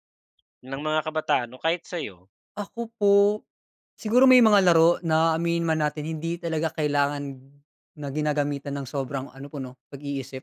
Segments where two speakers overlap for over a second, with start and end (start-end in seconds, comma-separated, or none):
none